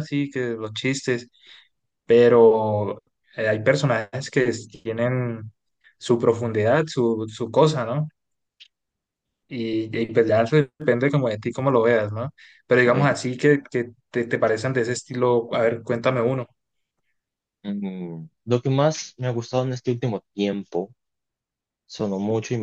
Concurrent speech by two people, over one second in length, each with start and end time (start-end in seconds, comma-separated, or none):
none